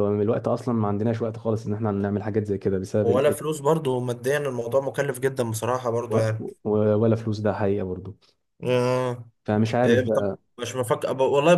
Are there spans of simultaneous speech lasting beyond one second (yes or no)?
no